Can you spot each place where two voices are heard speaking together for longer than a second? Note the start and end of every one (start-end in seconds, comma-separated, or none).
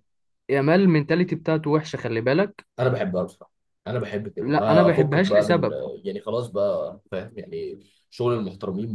4.4-5.7